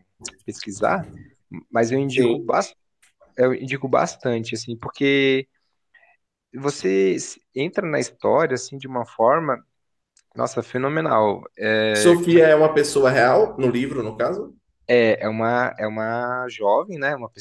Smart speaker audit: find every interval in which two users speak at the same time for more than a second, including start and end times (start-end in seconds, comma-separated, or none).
none